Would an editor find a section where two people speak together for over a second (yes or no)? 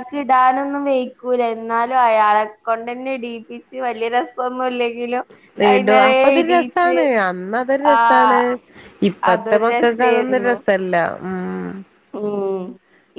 yes